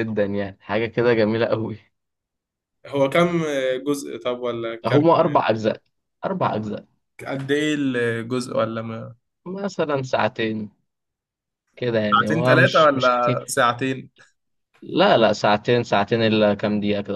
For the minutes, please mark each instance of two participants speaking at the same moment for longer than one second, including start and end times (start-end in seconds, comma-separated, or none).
12.1-13.6